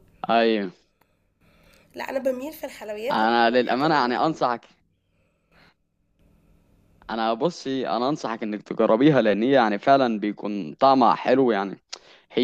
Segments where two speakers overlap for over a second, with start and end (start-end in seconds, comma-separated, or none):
3.1-4.6